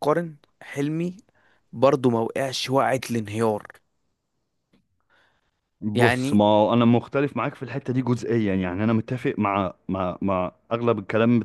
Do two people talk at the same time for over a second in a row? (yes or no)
no